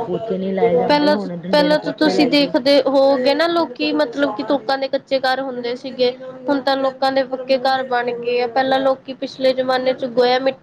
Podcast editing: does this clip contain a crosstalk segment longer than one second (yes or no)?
yes